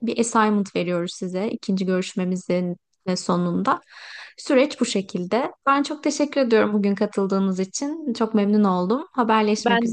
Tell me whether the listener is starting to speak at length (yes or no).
yes